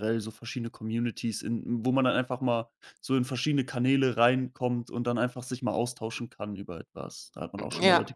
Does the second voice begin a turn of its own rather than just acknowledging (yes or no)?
yes